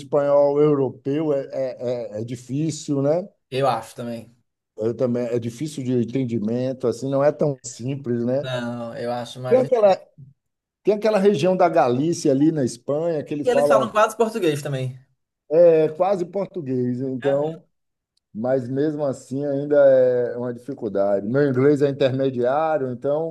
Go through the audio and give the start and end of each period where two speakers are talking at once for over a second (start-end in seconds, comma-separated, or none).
none